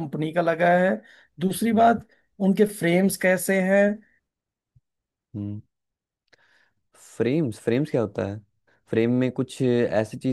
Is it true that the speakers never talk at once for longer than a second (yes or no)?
yes